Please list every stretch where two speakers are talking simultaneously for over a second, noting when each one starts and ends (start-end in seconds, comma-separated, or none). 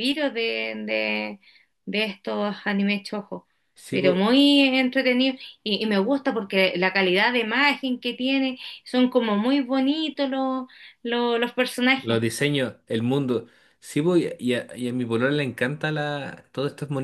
none